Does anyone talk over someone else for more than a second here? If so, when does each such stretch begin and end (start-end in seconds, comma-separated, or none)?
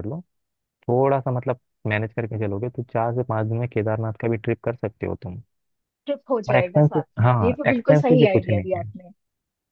6.5-8.9